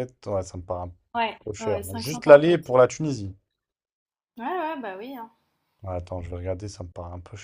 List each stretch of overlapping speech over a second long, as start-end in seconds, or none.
1.4-2.7